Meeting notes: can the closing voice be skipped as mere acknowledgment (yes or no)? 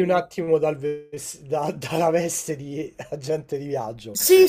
no